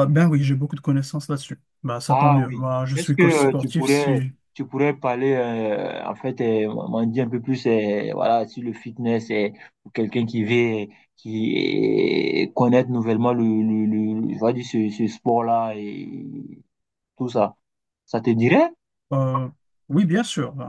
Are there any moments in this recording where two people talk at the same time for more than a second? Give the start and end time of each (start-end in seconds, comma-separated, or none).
2.1-4.3